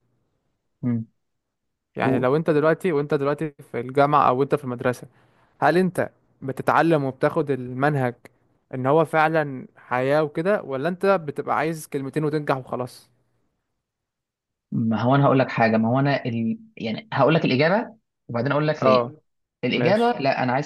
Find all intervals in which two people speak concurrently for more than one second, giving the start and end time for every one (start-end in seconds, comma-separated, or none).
none